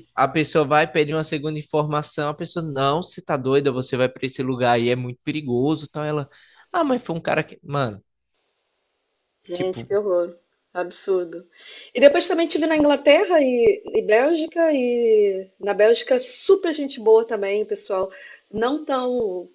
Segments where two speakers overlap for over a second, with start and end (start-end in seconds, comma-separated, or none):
none